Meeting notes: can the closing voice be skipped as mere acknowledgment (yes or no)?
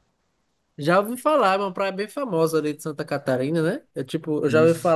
yes